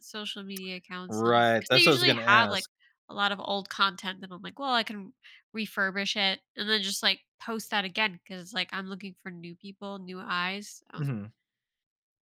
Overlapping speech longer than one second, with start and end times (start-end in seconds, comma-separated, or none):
1.1-2.7